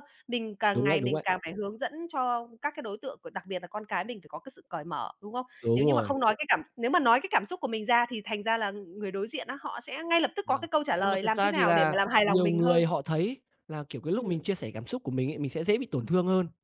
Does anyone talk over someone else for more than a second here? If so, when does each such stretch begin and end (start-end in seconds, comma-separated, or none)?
10.5-12.9